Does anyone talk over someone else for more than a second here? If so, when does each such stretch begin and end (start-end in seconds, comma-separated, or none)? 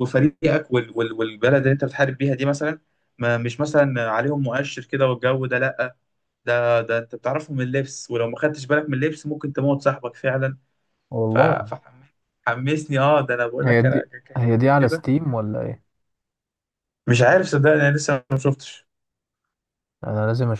13.6-15.0